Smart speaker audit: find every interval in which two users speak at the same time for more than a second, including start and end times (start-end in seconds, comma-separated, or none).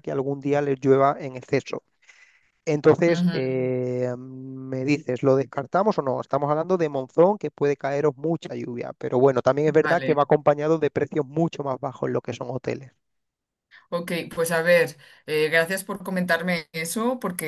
none